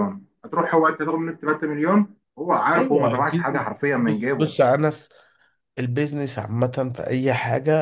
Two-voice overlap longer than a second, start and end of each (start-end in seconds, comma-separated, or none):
2.8-4.5